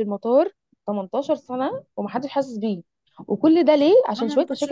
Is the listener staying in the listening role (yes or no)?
yes